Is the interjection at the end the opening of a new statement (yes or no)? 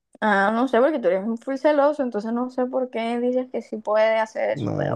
yes